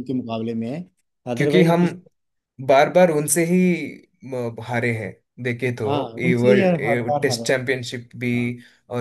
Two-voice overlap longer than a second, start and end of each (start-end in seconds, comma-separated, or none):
5.9-7.7